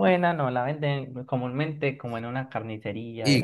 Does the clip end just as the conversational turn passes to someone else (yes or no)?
yes